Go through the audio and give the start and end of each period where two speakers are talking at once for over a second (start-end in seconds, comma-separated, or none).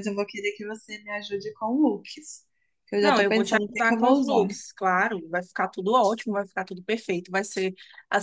3.0-4.5